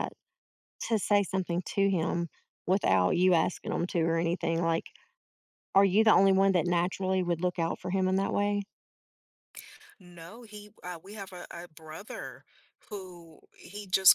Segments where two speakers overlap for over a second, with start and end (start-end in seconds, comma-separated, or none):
none